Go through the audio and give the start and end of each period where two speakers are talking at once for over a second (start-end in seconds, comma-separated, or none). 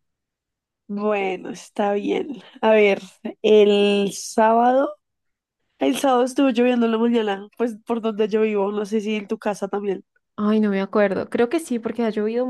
none